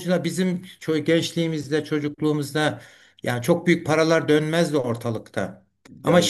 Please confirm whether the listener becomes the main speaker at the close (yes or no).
no